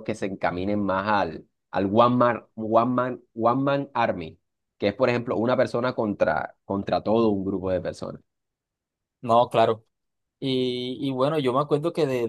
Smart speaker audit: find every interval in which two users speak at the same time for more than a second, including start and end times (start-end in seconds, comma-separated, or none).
none